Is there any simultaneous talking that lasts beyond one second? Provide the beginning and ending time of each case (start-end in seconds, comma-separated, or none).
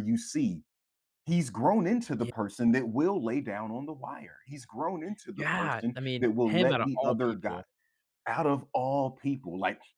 5.3-7.6